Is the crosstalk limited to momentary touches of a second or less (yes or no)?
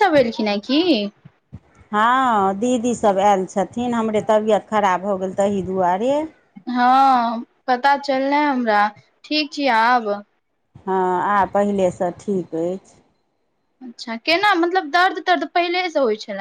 yes